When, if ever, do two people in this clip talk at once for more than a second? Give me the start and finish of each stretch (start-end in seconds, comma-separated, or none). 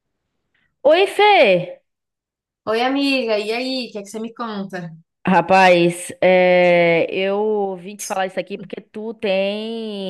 none